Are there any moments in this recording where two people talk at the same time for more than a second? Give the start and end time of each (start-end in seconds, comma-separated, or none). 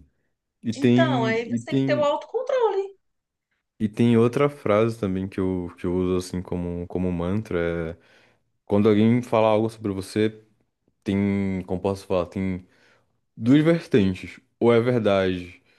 0.7-2.1